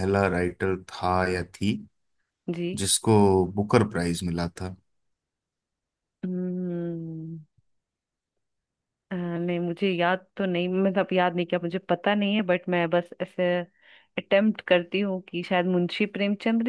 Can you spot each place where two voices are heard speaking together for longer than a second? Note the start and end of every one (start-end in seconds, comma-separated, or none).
none